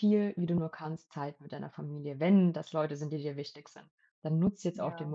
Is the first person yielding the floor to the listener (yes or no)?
no